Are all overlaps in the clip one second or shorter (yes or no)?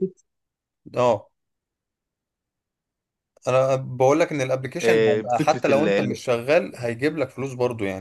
no